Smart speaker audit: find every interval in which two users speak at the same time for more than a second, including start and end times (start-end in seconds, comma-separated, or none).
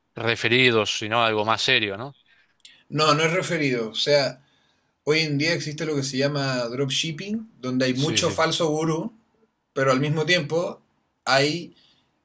none